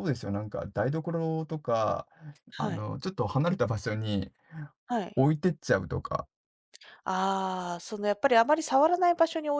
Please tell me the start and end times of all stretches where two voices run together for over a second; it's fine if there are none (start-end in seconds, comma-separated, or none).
none